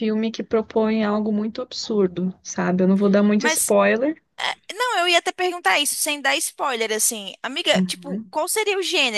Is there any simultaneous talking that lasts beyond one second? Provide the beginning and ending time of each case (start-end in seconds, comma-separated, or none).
none